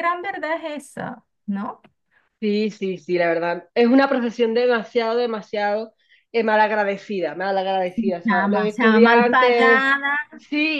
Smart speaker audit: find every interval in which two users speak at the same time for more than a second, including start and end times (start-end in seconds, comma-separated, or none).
8.0-9.8